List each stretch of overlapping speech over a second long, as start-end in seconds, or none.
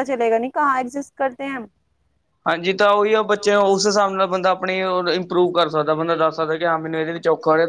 none